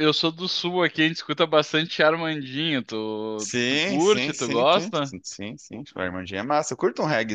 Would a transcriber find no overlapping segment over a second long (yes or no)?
no